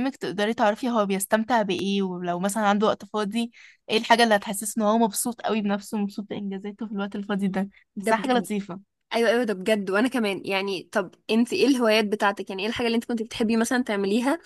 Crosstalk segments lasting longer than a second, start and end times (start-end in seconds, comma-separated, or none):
none